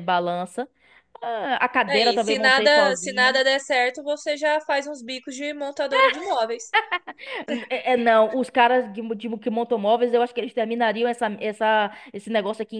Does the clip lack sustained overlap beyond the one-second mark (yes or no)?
no